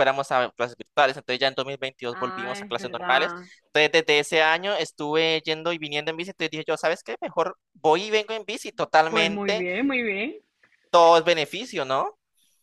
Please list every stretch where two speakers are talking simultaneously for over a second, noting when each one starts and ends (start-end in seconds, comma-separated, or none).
2.1-3.5